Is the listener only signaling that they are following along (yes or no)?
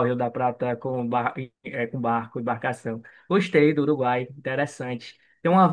yes